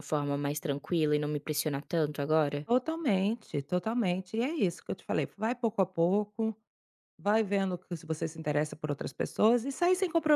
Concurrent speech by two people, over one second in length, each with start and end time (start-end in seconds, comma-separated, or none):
none